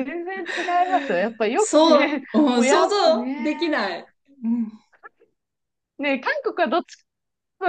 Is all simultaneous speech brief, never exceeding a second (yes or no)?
no